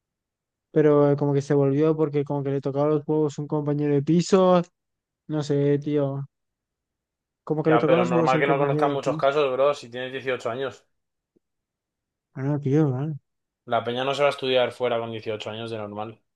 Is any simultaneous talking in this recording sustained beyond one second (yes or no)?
yes